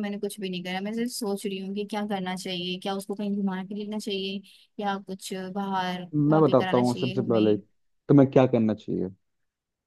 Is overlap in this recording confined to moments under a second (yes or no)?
no